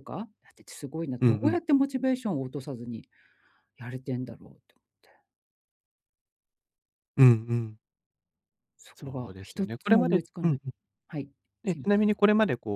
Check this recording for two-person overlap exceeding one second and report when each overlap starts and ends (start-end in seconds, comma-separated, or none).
8.9-10.6